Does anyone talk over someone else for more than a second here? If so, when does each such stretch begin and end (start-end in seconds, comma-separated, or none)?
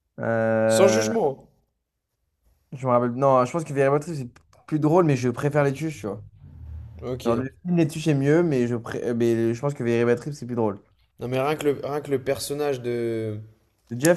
none